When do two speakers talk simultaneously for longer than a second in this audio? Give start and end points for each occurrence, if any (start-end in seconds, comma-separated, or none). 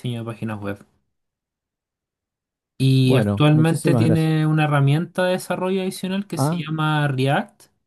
3.0-4.3